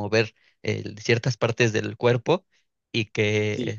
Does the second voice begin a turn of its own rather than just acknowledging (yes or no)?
no